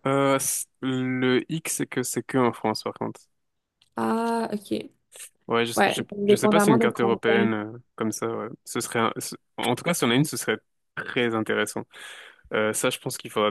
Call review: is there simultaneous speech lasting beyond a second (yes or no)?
yes